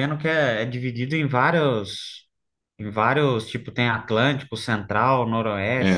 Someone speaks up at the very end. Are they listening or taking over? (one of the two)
taking over